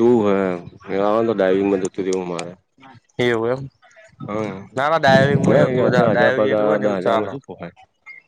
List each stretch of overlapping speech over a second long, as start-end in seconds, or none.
5.9-7.3